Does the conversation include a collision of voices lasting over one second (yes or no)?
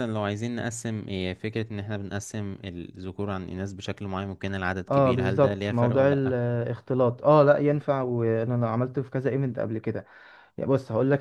yes